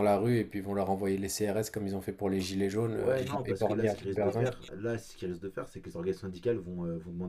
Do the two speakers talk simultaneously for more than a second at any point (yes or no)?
yes